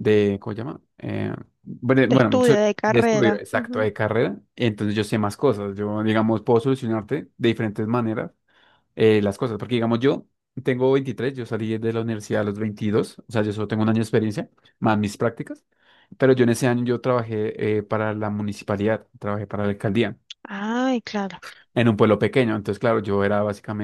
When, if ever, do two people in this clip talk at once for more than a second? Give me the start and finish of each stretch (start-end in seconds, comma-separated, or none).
2.0-3.9